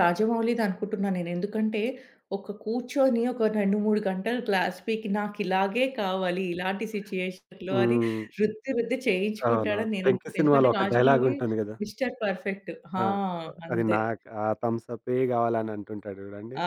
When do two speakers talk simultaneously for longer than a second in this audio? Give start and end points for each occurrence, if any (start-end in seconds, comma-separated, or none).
9.5-11.3